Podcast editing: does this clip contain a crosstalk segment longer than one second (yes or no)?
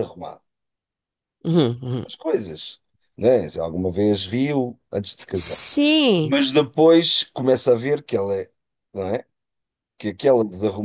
no